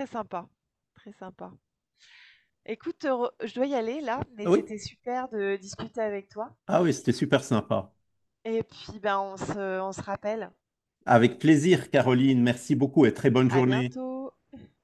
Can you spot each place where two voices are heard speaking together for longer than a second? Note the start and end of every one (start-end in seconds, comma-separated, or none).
none